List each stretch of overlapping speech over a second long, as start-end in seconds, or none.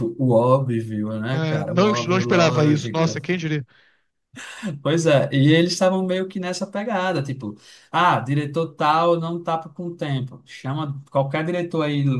1.3-3.0